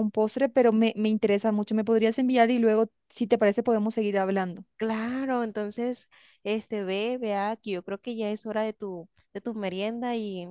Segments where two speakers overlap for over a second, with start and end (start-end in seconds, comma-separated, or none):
none